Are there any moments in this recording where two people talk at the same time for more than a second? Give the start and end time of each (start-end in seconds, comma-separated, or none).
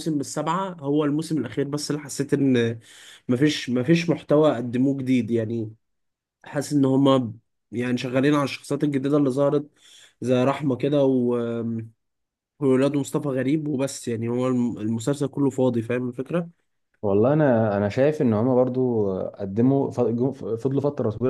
none